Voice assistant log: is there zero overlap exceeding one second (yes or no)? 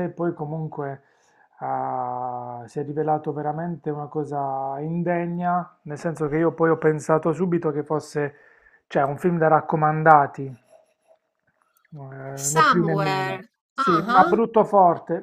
no